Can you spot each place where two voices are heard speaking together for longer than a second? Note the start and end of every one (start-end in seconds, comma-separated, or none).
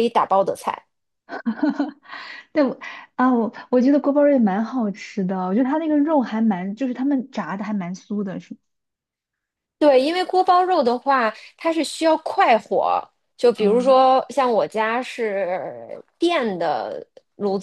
none